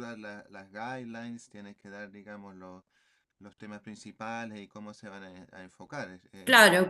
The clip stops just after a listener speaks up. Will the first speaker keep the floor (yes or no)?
no